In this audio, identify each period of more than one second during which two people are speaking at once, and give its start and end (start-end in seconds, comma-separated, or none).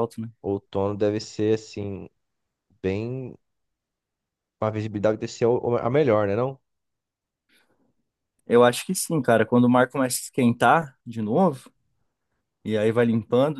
none